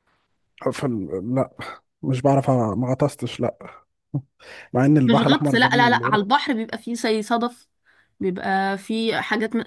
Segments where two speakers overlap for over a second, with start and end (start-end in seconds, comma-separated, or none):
5.1-6.3